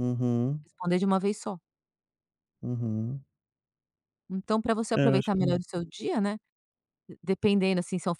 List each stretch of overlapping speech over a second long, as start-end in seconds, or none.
none